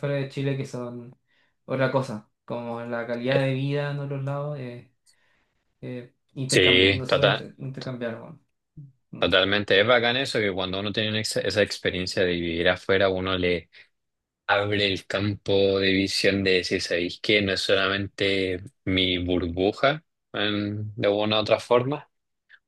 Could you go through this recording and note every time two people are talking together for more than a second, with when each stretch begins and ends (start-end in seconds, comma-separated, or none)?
none